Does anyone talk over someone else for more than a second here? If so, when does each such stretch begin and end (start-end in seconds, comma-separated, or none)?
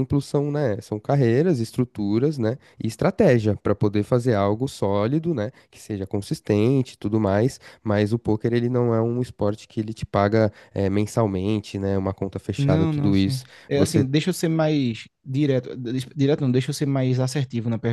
12.6-14.1